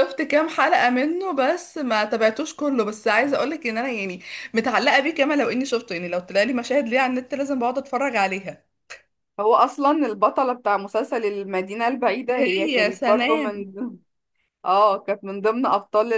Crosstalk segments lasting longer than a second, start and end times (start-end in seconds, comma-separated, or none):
12.4-13.6